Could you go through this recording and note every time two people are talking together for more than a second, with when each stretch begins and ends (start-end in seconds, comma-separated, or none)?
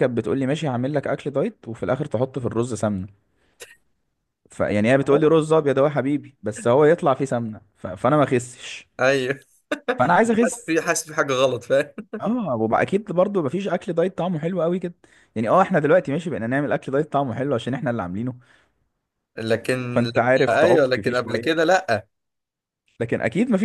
19.9-21.7